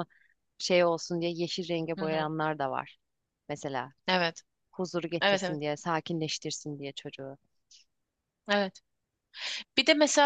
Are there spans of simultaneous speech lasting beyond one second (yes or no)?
no